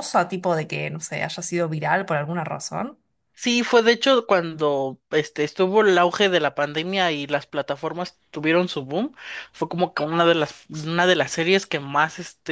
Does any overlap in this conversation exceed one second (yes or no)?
no